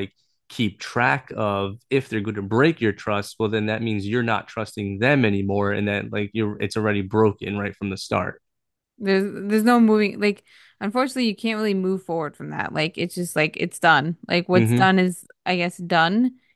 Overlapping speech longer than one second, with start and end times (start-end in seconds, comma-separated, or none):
none